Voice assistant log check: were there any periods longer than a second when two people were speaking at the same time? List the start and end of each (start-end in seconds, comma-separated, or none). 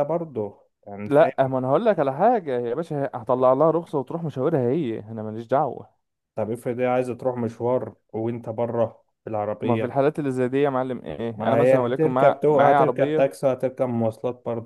11.4-13.2